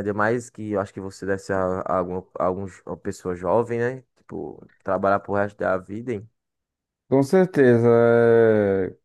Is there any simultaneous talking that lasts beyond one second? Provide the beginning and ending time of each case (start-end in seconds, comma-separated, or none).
none